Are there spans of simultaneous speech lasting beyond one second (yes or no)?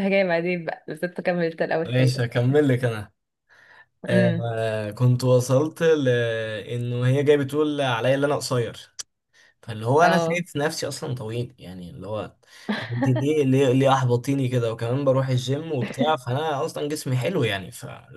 no